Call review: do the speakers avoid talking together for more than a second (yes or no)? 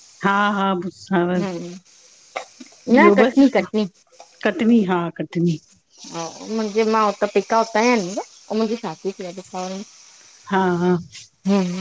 yes